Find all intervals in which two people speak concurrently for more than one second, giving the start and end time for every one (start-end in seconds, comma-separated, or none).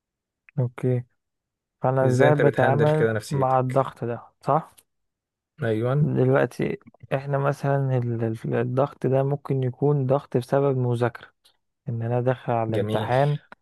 2.0-3.8